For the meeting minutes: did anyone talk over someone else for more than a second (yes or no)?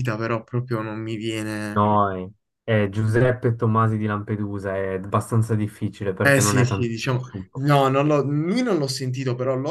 yes